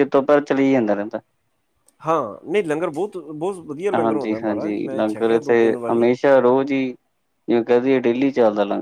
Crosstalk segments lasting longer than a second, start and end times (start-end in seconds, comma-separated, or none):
4.0-6.1